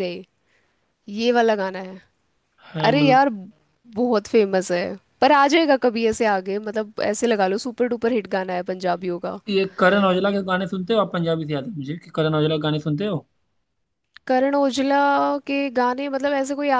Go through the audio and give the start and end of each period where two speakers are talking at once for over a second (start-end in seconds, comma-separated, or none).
none